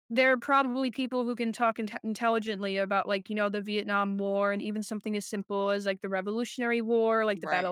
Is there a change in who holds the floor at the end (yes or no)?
no